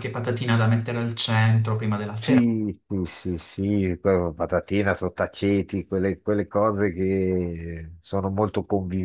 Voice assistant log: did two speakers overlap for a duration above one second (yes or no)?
no